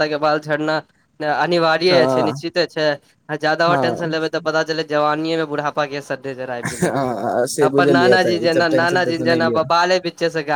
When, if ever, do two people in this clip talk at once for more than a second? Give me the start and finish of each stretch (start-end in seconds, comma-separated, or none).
8.0-9.6